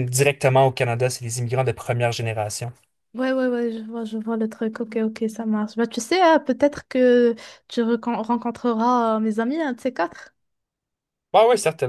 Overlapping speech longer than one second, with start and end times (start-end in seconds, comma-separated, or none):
none